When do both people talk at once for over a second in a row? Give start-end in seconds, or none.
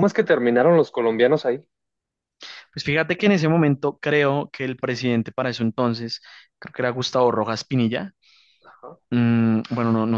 none